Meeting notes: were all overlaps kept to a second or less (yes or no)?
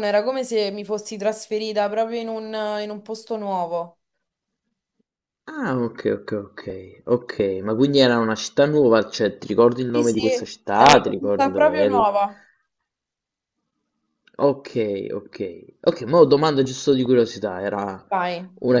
no